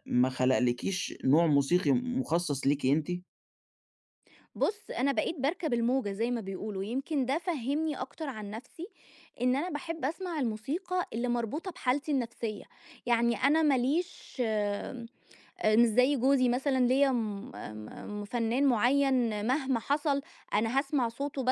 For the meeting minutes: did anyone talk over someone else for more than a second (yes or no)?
no